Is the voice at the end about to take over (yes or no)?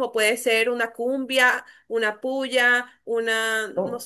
no